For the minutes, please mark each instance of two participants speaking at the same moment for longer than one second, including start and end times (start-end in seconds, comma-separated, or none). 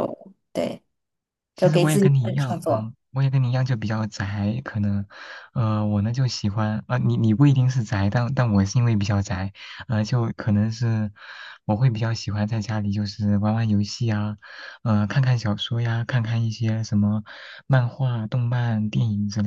1.6-2.9